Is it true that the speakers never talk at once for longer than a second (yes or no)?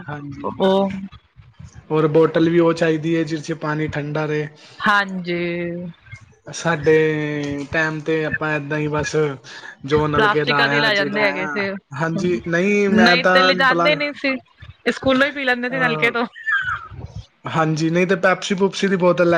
no